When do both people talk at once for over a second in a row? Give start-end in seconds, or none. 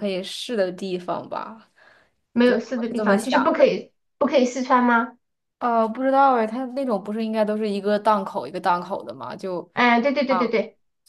2.4-3.7